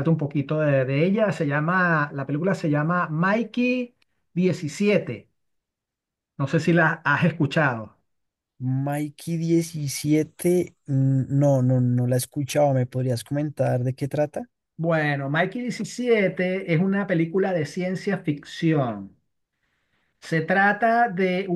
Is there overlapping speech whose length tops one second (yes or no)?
no